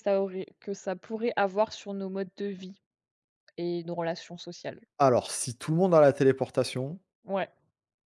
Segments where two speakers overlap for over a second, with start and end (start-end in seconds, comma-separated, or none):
none